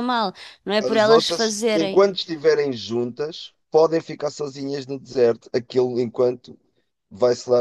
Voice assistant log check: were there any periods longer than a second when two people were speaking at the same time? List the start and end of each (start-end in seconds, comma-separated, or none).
0.8-2.0